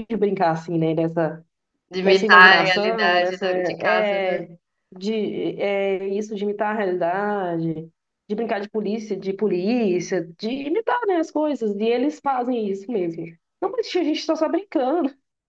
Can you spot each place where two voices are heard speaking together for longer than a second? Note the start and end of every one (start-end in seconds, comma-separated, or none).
2.0-4.4